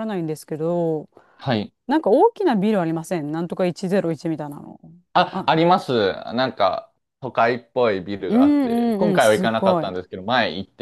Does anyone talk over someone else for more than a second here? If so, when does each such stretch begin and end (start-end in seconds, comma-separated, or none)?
8.3-9.9